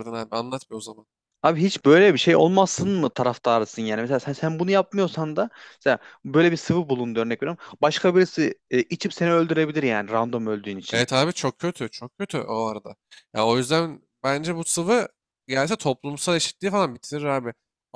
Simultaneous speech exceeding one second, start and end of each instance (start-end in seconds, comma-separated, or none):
none